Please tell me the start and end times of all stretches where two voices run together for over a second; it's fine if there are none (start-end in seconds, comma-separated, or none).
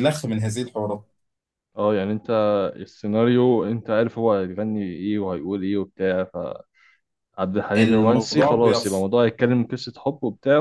7.8-9.1